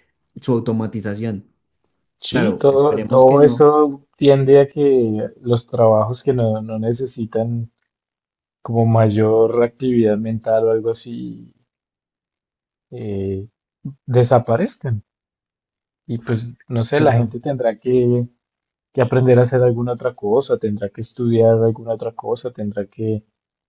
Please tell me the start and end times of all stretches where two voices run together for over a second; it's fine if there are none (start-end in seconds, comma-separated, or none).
2.3-3.7